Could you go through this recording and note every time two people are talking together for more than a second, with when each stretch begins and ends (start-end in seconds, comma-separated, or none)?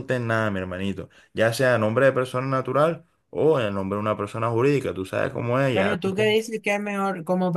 none